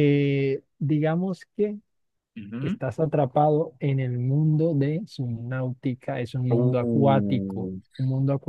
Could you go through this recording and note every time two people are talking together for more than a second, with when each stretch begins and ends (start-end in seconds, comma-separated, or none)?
6.5-7.8